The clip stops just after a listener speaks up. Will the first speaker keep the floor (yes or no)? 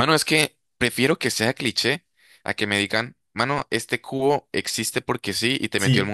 no